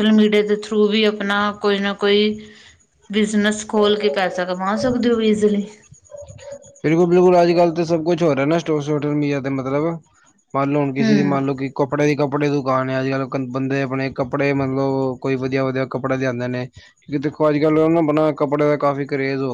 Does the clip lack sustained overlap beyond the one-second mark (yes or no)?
yes